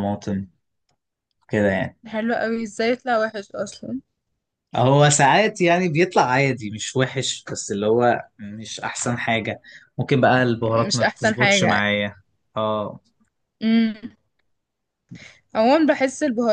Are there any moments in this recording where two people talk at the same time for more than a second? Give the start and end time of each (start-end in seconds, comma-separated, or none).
10.6-11.9